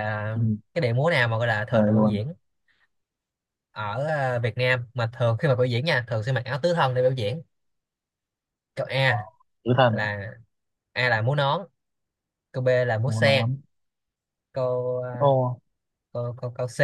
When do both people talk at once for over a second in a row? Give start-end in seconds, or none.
none